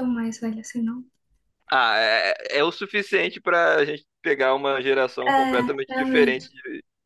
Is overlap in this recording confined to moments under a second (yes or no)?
no